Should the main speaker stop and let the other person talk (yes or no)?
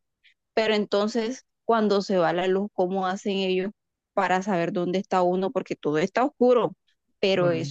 no